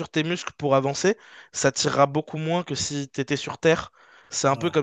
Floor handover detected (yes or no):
no